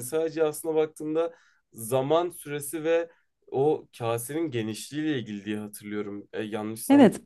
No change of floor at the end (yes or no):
no